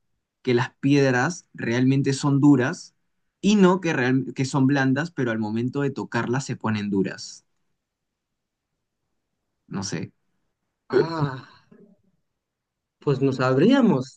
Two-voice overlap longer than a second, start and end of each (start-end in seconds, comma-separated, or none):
none